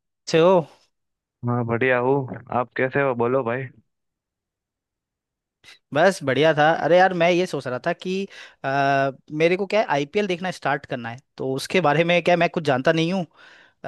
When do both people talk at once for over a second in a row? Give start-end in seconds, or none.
none